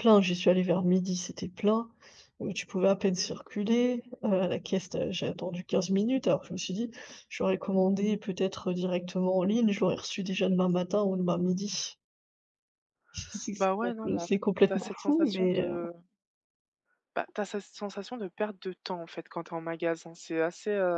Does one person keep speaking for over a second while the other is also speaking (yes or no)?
yes